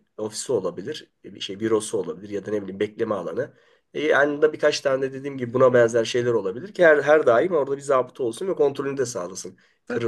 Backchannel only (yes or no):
no